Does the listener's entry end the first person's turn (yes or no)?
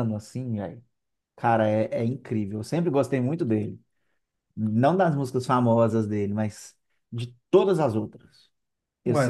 no